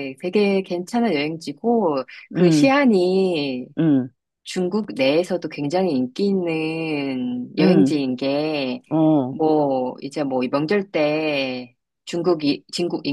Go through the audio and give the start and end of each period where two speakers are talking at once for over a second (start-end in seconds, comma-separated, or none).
none